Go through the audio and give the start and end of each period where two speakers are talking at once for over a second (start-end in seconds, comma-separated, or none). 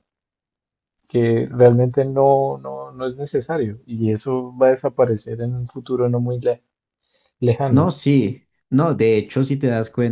none